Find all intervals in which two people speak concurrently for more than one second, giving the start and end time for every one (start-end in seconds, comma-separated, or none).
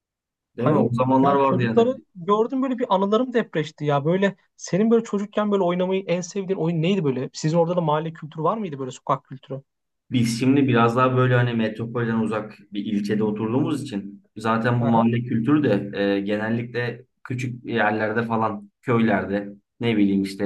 0.6-1.9